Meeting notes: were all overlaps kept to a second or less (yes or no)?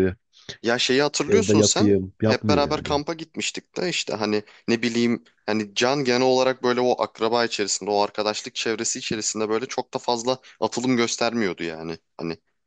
no